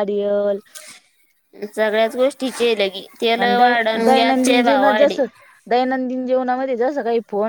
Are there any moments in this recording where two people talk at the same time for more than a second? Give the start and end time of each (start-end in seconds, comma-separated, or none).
3.4-5.2